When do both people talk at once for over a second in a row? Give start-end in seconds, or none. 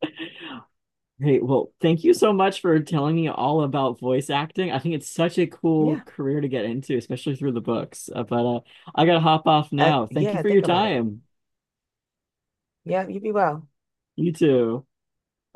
9.8-11.1